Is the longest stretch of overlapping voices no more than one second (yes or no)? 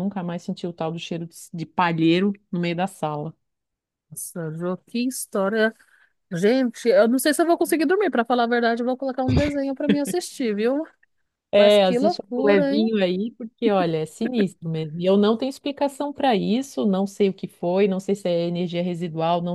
no